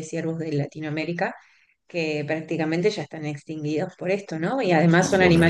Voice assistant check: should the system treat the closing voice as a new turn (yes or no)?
no